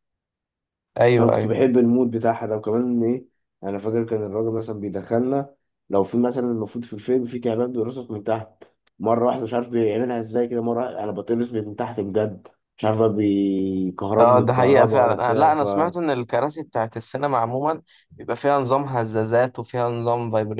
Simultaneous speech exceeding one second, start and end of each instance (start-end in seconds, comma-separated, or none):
14.2-15.6